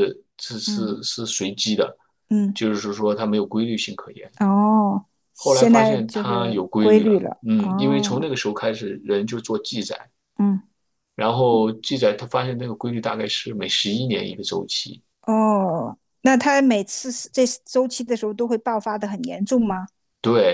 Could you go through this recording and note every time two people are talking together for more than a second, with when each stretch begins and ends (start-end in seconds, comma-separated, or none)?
5.3-8.3